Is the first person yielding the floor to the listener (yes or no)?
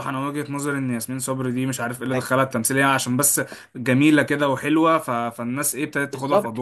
yes